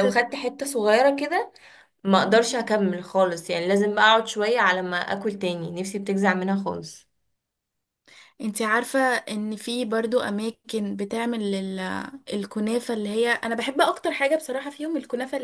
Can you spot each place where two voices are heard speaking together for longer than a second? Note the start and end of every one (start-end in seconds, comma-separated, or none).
none